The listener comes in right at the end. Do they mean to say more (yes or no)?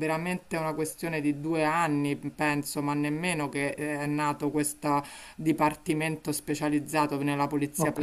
no